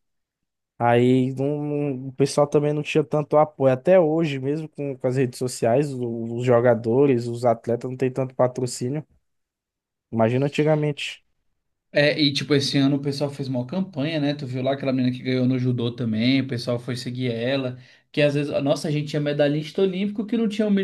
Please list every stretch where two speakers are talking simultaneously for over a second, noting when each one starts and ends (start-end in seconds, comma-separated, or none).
none